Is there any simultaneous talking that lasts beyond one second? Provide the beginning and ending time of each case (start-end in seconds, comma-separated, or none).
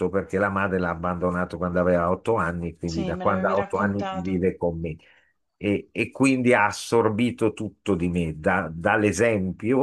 2.9-4.4